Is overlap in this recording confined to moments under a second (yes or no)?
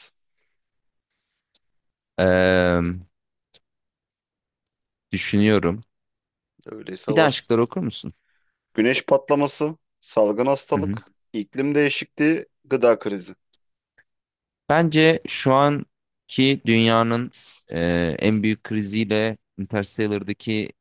yes